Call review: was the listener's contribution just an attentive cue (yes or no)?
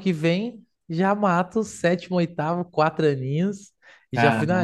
yes